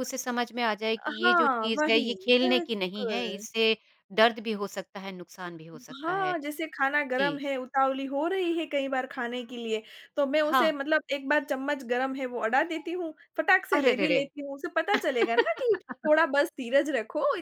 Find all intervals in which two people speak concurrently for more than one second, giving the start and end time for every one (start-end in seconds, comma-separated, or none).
1.2-3.4